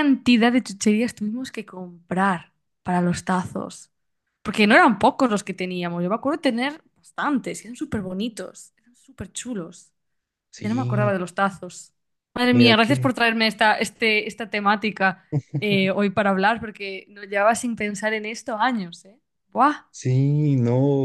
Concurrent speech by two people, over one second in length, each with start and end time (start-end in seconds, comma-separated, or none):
none